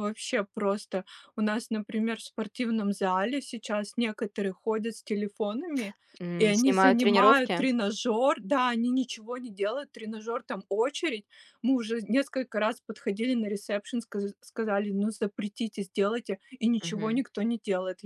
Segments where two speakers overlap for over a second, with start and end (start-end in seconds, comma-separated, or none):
6.4-7.7